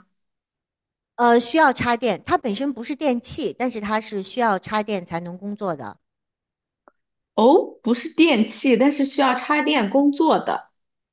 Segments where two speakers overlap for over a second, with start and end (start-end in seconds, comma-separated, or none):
none